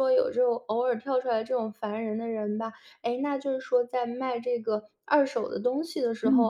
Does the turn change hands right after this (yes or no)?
no